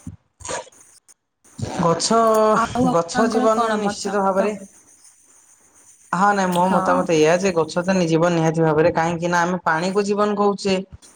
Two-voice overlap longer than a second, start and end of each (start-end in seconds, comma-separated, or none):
3.0-4.4